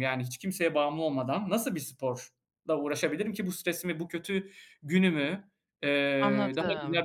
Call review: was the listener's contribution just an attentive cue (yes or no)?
yes